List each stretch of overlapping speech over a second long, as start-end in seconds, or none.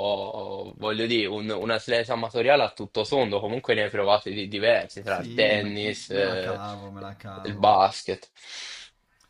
5.0-6.6